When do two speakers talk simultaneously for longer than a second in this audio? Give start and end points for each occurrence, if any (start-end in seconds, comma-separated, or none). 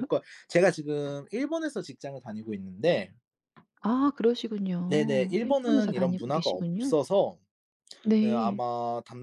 4.9-6.9